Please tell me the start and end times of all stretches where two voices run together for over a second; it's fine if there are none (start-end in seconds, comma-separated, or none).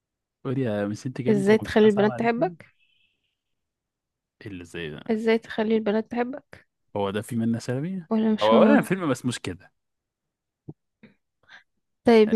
1.3-2.6